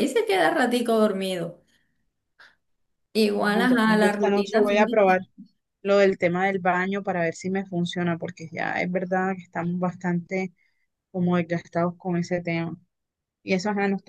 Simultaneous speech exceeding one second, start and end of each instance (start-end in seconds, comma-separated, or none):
3.3-5.2